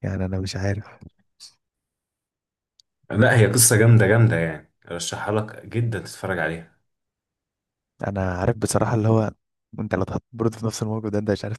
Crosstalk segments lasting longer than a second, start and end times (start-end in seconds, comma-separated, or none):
none